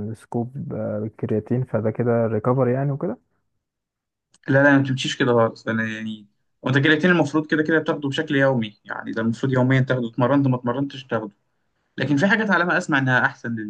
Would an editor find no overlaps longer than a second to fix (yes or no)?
yes